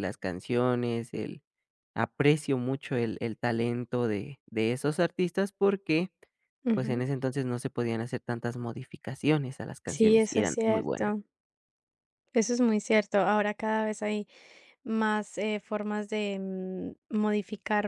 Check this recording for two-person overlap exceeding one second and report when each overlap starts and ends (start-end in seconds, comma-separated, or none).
9.9-11.1